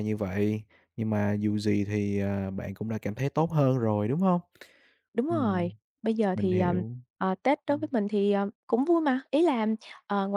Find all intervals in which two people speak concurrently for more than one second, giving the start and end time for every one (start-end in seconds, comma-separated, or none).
none